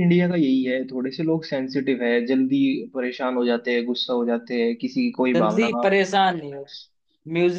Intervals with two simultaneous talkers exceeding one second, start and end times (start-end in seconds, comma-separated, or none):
none